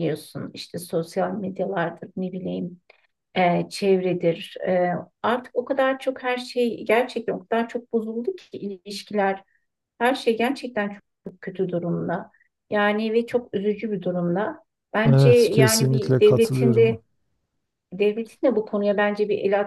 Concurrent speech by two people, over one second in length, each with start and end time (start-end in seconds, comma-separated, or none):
15.0-17.0